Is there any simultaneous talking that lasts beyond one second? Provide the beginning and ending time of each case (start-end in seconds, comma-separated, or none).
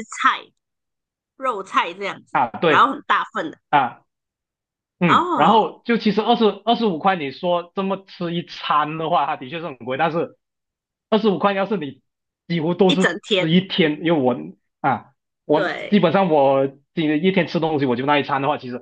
none